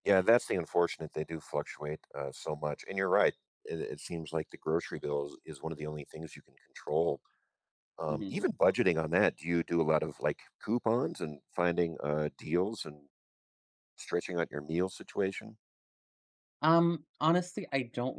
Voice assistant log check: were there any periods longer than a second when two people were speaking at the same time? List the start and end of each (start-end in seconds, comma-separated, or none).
none